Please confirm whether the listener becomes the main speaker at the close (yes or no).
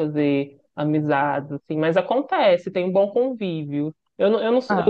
no